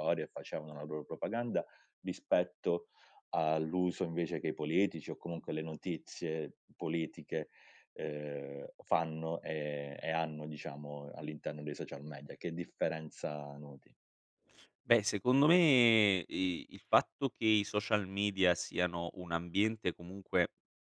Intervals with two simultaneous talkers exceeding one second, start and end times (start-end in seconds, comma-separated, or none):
none